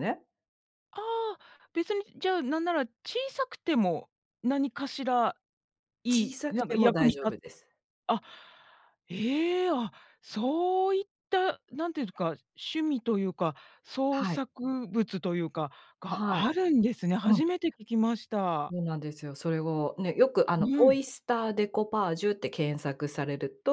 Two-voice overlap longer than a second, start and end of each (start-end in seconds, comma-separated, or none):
6.1-7.3